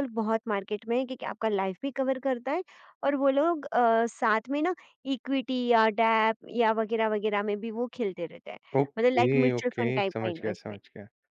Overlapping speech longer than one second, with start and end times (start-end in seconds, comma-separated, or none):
9.0-10.8